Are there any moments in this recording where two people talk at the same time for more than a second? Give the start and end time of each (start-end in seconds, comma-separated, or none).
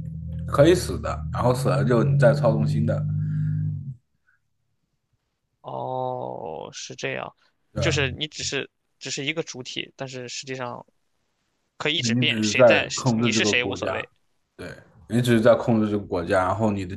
12.2-14.1